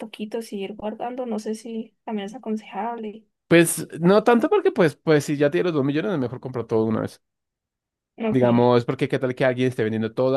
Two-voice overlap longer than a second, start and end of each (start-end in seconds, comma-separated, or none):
none